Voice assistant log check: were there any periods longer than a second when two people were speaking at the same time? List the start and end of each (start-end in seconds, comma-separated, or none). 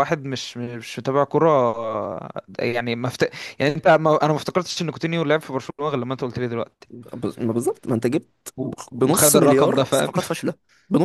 8.6-10.1